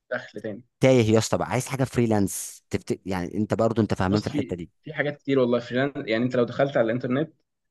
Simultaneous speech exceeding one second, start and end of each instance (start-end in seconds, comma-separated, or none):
none